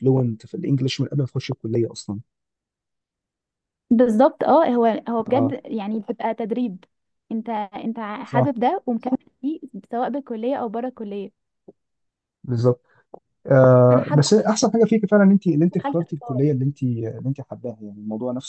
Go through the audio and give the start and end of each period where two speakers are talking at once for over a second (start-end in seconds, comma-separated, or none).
none